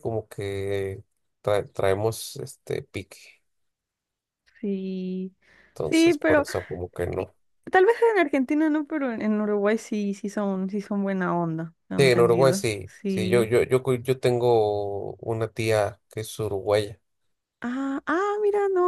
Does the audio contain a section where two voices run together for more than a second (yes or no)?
yes